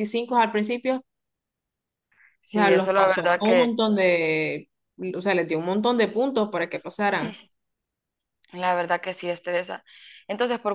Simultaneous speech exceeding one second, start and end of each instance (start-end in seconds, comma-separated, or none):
2.5-3.8